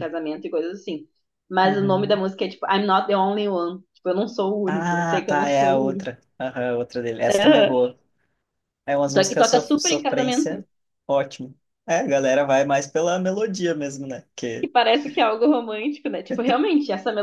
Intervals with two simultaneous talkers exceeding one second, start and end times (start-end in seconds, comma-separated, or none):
4.7-6.1, 9.1-10.5